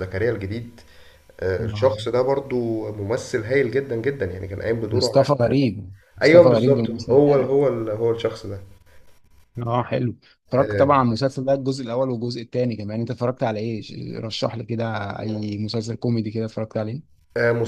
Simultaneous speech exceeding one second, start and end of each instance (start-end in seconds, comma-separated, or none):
6.2-7.6